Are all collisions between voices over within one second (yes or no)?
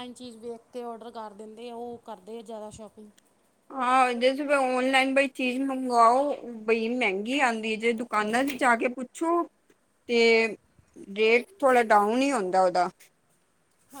yes